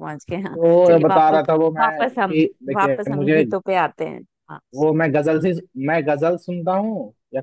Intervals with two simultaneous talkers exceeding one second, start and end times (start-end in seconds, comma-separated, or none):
0.6-3.4